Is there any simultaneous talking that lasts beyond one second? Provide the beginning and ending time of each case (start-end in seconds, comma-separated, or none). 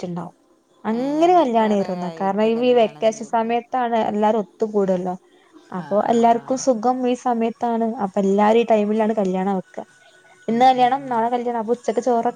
1.0-3.5